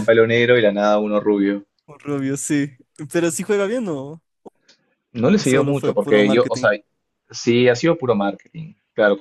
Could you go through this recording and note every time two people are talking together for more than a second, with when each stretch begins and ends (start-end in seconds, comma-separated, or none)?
5.4-6.7